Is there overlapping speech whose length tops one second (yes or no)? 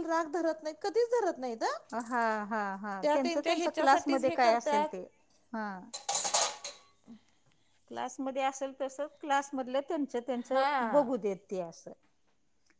yes